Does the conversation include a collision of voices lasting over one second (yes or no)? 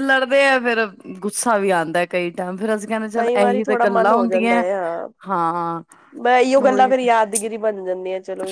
yes